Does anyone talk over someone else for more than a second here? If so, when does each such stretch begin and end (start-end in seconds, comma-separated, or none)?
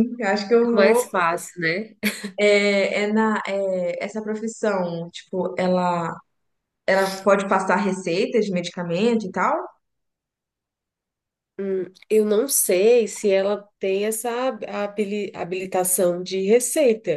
none